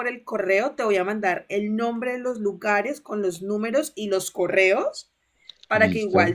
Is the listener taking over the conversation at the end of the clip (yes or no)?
no